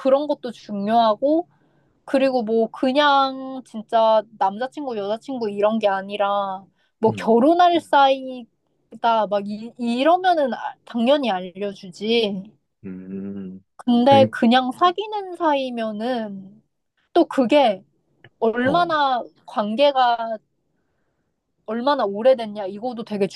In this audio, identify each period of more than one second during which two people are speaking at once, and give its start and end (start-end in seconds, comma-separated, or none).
none